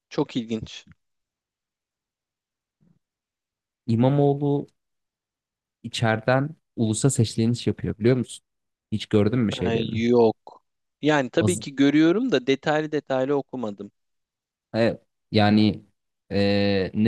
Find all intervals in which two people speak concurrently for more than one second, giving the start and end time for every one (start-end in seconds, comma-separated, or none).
none